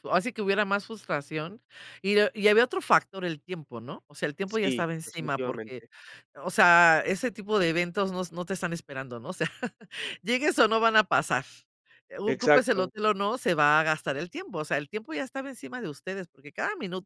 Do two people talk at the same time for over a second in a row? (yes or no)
yes